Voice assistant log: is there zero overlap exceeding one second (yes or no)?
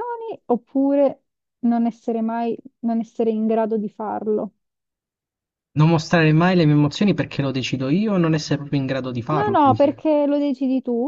yes